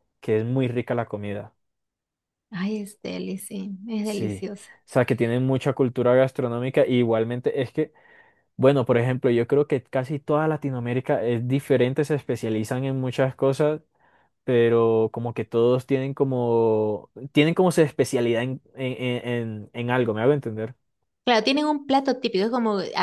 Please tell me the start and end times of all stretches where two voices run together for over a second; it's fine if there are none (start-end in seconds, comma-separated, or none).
none